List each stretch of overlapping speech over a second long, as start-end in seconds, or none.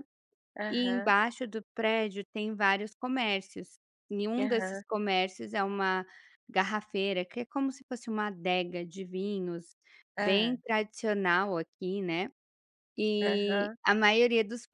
none